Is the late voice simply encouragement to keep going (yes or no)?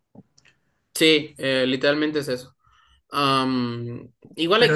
yes